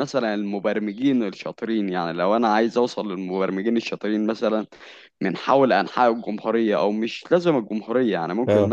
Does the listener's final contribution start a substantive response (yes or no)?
no